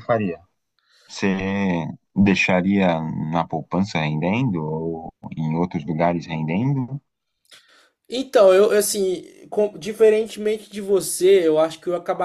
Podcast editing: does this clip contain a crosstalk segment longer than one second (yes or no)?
no